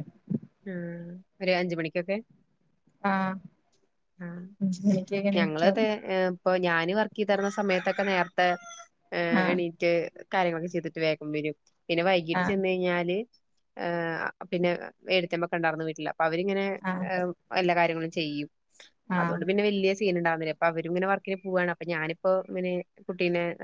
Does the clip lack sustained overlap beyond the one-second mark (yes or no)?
yes